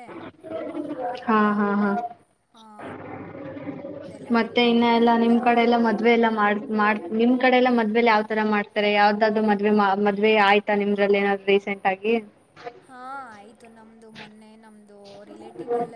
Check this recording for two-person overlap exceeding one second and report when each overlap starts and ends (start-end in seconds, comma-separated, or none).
none